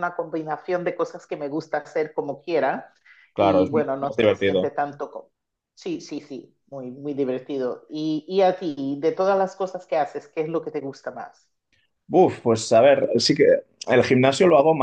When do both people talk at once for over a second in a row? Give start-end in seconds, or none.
3.4-4.7